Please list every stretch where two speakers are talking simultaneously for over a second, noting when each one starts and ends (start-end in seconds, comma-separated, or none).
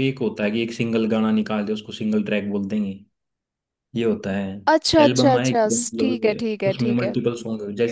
5.0-7.1